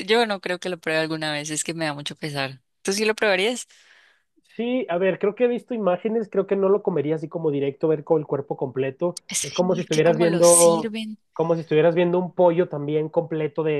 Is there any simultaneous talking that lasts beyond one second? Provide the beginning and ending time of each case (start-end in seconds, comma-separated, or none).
9.3-10.9